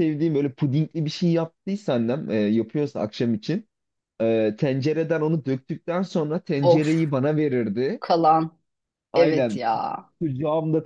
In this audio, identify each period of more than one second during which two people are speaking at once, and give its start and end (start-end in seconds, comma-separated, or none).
none